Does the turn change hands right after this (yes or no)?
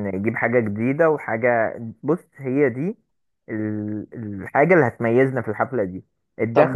no